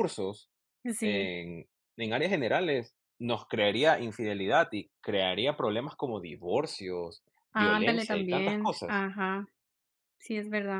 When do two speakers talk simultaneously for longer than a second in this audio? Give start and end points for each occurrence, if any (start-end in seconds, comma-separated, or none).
7.5-9.0